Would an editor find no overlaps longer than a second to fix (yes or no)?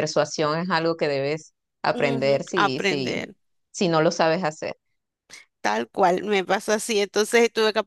no